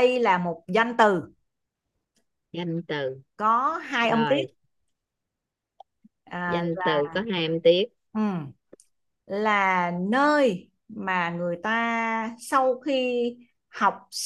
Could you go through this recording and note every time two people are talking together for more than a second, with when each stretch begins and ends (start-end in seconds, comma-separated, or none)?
none